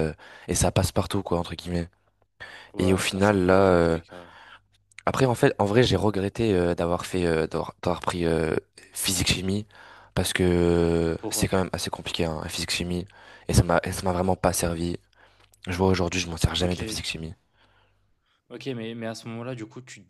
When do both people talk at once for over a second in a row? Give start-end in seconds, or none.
2.8-4.0